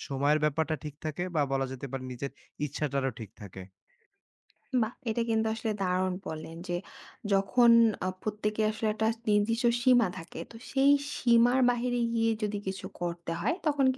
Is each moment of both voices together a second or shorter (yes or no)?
yes